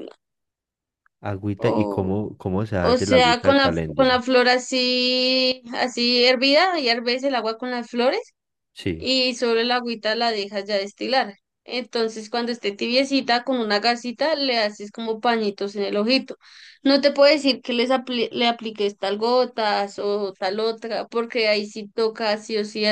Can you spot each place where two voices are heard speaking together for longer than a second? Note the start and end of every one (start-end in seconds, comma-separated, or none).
2.8-4.2